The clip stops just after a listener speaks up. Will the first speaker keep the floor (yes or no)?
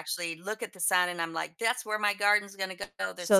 no